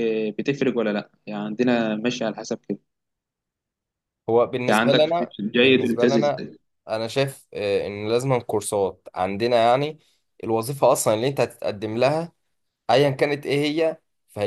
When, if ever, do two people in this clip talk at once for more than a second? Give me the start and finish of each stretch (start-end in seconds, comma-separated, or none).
4.7-6.4